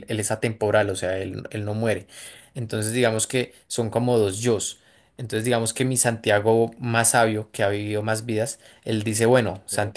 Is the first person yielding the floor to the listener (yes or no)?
no